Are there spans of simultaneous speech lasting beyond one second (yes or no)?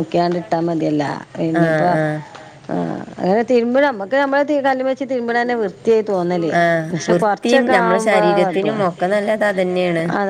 yes